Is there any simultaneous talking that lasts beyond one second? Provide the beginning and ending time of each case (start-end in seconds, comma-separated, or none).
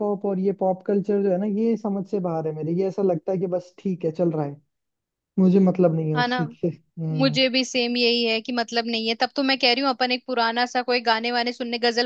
none